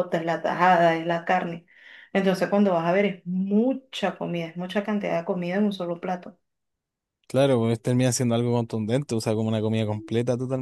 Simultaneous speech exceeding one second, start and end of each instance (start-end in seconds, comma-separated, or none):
none